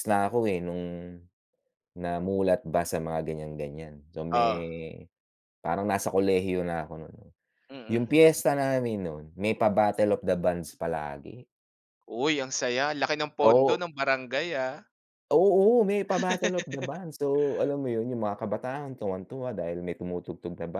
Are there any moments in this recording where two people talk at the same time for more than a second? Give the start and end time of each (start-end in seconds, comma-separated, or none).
none